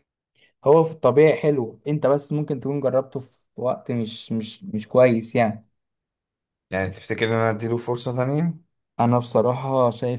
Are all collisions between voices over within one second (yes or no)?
yes